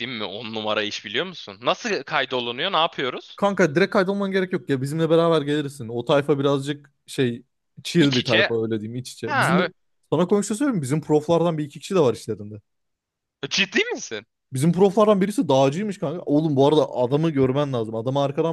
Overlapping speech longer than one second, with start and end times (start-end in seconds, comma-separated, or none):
none